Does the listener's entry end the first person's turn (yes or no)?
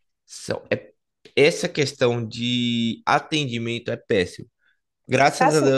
no